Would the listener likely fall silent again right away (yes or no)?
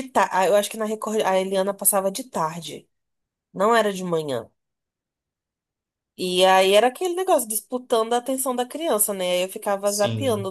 yes